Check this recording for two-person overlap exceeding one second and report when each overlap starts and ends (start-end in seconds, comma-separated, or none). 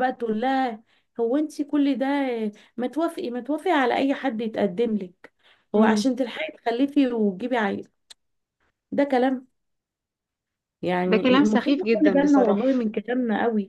11.1-12.9